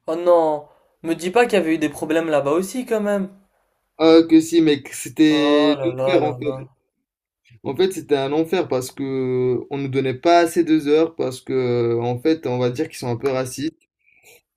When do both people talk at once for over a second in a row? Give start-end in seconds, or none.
5.3-6.7